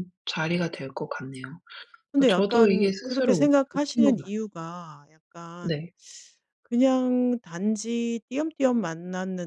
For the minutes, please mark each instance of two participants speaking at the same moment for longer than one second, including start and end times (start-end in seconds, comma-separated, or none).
2.1-4.3